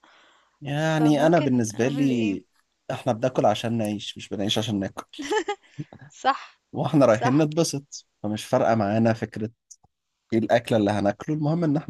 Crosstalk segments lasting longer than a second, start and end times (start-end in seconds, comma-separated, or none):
0.7-2.4